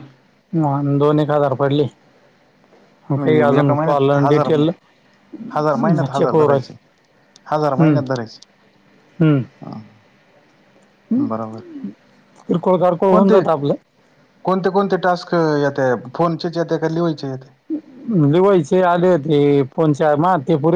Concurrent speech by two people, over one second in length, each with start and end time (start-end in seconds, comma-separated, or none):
3.2-4.5